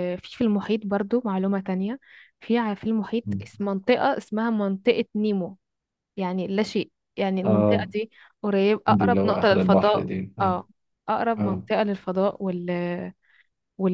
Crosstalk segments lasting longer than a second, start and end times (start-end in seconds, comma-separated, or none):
8.9-10.6